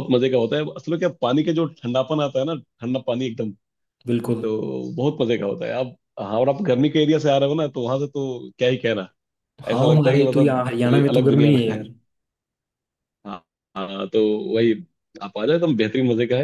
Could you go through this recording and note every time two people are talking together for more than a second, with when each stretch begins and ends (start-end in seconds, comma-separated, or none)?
9.7-11.6